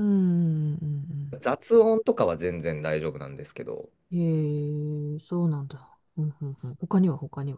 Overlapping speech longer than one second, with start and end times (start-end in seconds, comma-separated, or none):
none